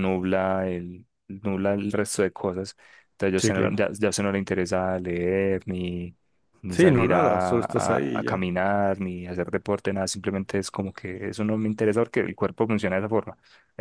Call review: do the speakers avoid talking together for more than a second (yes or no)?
no